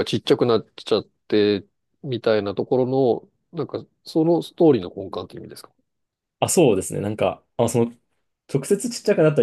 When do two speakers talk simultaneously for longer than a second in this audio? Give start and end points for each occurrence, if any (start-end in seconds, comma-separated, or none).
none